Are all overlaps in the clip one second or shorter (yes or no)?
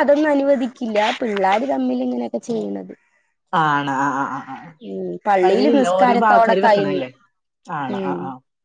no